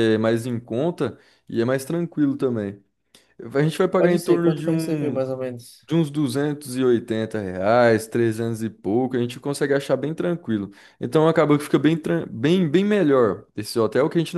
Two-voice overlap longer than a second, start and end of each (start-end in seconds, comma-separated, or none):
4.0-5.2